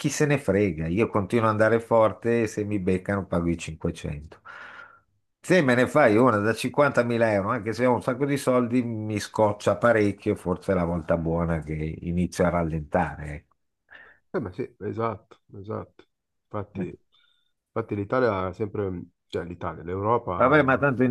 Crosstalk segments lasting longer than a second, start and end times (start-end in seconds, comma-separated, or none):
none